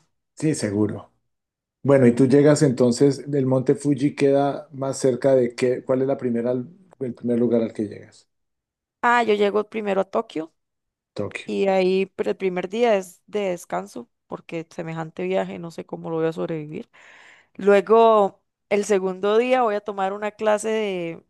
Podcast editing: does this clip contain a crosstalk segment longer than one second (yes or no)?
no